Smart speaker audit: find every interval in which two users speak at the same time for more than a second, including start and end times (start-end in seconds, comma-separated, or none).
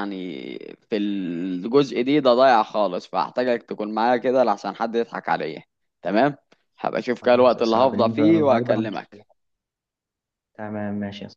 7.2-9.1